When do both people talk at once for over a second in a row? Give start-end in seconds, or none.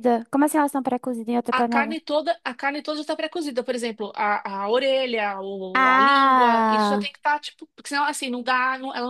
5.7-7.1